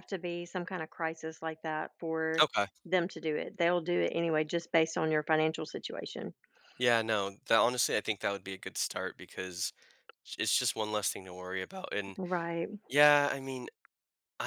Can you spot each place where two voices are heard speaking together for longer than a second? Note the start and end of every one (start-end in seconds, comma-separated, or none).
none